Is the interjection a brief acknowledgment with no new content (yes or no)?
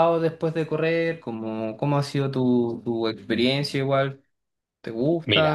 no